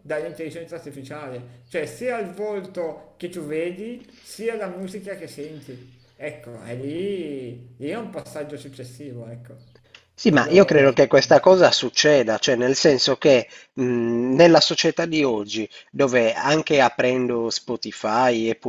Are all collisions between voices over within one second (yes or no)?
yes